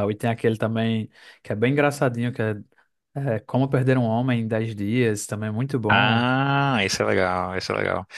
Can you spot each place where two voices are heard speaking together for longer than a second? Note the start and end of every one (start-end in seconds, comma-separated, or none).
none